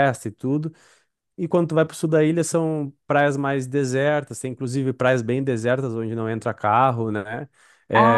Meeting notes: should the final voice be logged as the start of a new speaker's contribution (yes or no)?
no